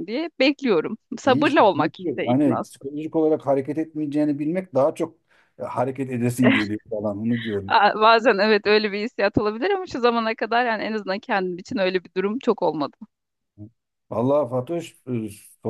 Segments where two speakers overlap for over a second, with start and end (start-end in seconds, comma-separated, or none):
1.2-2.9